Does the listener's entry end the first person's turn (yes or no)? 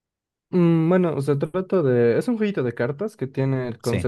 no